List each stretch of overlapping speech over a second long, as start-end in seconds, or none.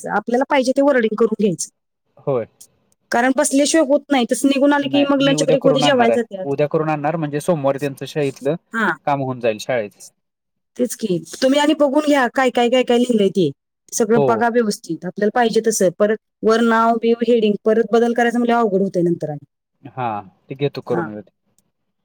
4.9-6.5